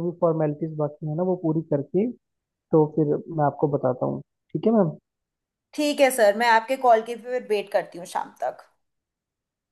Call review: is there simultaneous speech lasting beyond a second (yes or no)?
no